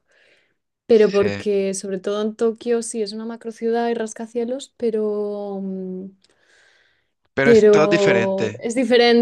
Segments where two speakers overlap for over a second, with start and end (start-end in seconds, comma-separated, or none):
7.4-8.6